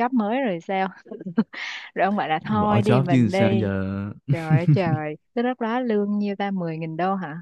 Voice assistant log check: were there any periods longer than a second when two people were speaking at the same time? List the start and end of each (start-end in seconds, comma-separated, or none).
2.4-3.7